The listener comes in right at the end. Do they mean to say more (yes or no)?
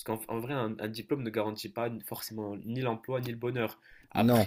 no